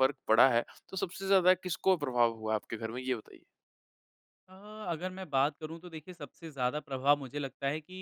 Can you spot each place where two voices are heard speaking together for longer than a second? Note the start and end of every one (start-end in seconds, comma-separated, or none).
none